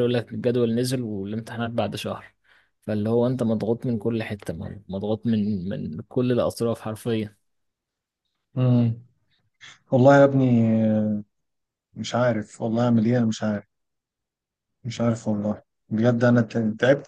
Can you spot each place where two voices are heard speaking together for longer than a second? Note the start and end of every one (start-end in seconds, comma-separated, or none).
none